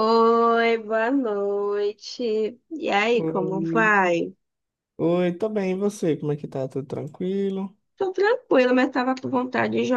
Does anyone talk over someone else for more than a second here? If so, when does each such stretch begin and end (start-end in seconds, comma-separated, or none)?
none